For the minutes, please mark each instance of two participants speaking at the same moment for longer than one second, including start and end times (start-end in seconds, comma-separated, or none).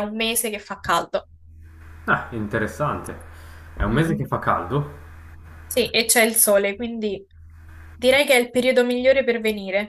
none